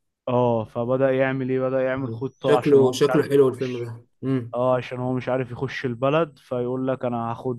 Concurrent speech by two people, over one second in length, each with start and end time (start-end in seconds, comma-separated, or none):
1.9-3.9